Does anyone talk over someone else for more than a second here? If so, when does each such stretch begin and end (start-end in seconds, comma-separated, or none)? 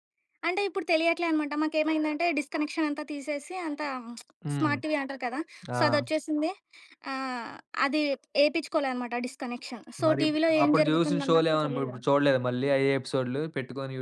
10.1-11.9